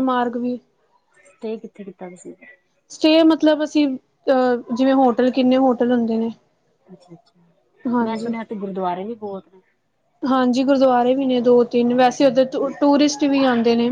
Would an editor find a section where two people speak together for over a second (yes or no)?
no